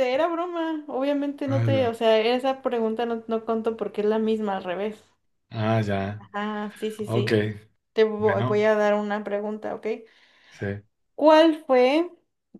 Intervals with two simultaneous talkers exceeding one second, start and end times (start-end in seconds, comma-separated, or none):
none